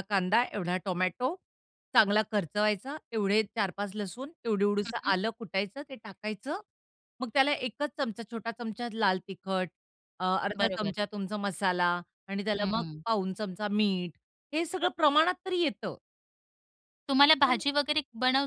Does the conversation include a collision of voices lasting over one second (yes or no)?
no